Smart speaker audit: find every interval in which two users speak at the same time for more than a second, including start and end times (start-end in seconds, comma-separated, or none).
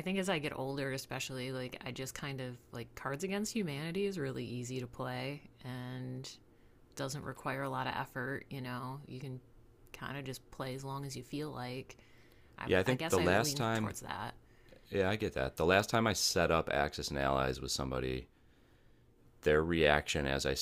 12.7-13.9